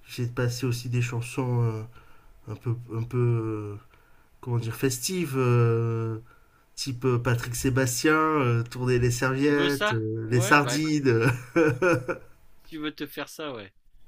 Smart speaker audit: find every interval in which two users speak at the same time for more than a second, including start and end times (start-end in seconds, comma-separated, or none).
9.4-10.8